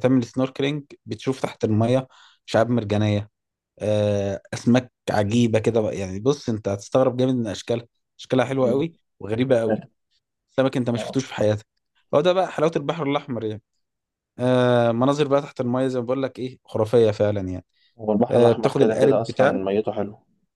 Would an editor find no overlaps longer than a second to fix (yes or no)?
no